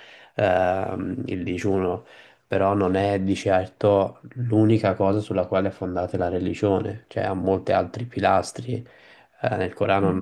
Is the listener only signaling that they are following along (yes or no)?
yes